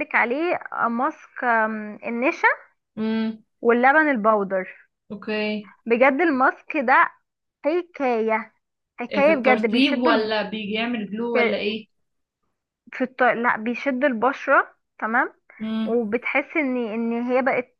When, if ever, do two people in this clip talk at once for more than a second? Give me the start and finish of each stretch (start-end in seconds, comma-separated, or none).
9.1-10.3